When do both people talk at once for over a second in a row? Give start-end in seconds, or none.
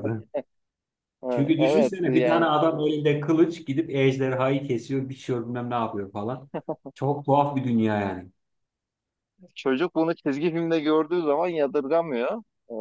1.3-2.5